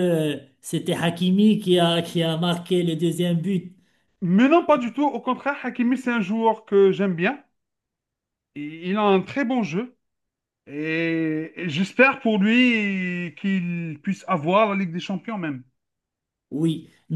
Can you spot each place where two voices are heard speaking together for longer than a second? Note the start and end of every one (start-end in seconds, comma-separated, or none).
none